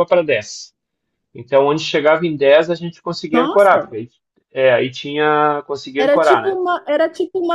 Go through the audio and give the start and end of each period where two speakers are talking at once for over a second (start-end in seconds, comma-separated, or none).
none